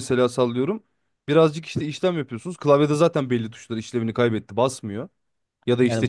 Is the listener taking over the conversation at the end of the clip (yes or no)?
yes